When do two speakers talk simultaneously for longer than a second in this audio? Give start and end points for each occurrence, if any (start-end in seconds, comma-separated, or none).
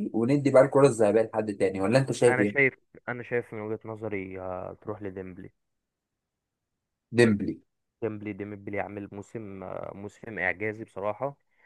none